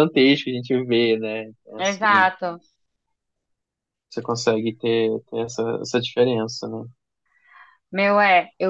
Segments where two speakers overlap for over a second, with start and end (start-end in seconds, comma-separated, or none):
none